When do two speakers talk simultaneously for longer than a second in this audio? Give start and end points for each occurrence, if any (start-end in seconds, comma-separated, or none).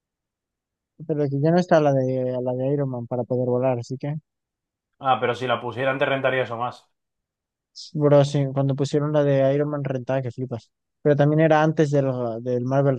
none